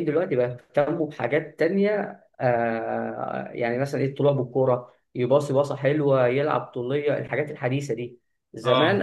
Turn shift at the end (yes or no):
no